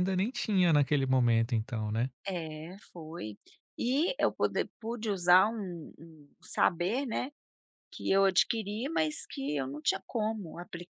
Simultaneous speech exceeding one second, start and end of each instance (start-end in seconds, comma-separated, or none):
none